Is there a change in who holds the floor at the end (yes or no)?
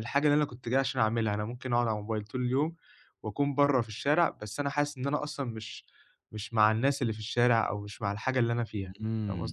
yes